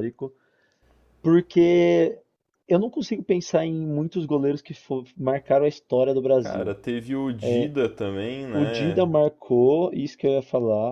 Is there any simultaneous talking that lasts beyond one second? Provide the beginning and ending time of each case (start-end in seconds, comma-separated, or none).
none